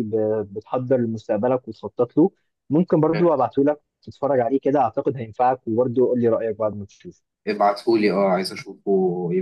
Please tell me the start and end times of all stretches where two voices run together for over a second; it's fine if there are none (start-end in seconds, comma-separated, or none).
none